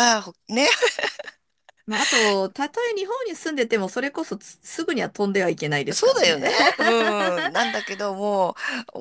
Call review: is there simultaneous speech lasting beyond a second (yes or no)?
no